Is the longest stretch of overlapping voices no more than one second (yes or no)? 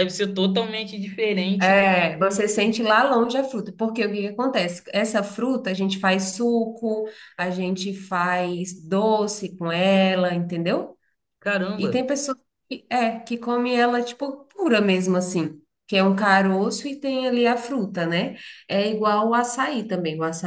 yes